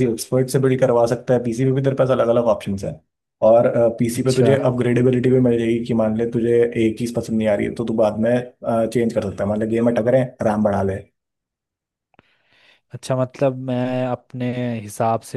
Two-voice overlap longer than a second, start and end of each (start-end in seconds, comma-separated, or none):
none